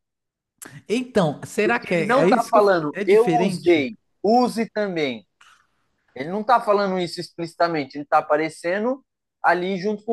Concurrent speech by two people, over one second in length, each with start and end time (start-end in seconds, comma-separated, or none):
1.6-3.9